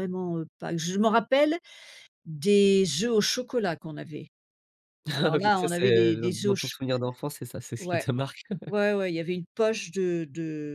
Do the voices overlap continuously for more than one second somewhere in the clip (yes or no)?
yes